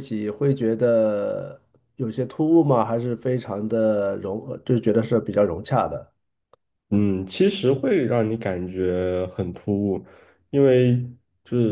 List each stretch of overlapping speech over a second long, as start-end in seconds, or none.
none